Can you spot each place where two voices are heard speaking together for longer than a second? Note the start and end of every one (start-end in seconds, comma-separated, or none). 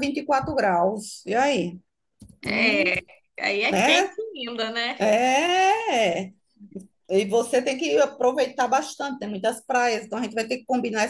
none